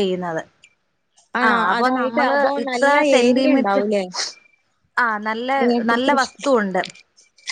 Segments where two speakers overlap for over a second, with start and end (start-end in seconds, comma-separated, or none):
1.5-3.8